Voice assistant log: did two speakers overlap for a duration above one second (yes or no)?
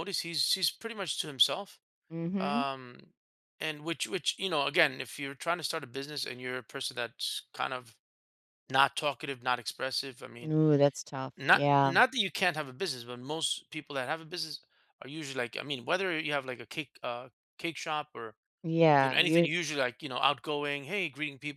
no